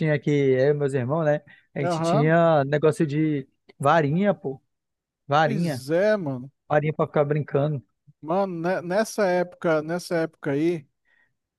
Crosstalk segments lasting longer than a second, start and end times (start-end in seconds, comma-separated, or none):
none